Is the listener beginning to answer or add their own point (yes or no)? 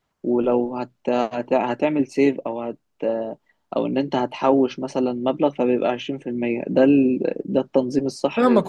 yes